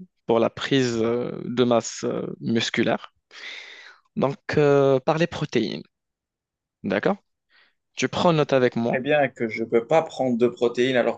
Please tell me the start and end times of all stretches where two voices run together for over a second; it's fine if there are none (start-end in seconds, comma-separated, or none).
none